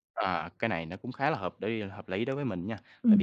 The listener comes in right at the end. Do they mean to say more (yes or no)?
no